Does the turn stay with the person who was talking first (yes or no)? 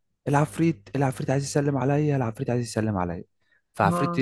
yes